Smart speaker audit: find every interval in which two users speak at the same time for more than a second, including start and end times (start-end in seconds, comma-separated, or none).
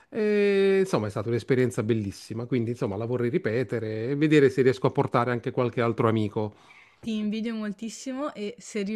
none